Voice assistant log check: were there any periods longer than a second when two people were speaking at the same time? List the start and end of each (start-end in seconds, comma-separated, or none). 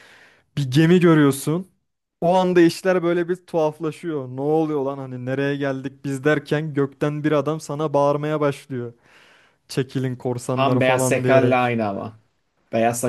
10.5-11.7